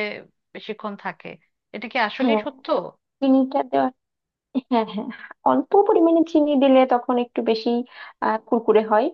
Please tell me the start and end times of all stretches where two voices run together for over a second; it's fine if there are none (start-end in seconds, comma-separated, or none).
none